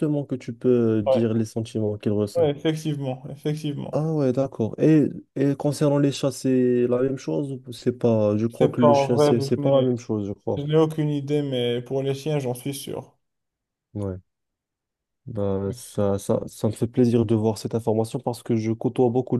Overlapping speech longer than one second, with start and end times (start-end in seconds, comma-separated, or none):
8.5-9.9